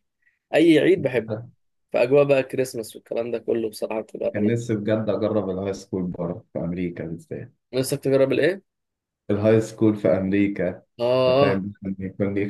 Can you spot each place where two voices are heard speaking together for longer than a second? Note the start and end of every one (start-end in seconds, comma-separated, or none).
none